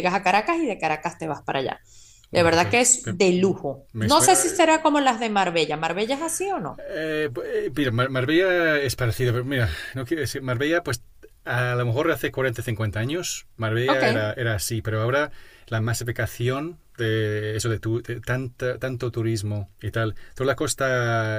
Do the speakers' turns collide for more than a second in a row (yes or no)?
yes